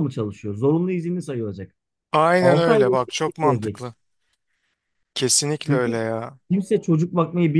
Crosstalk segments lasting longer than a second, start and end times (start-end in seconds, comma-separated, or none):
2.4-3.9